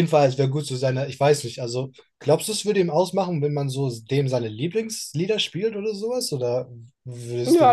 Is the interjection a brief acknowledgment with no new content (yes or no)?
no